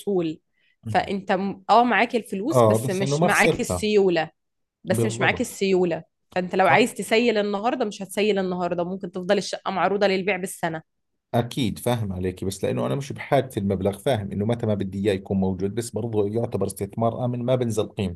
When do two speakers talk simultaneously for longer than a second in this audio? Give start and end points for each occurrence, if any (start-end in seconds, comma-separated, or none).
2.5-3.9